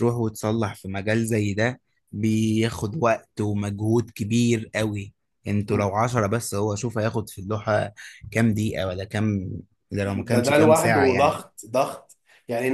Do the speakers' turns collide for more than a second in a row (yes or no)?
yes